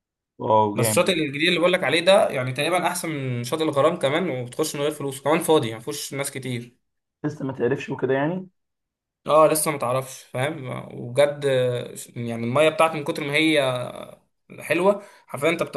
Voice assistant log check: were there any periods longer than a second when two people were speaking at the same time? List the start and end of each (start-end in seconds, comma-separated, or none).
none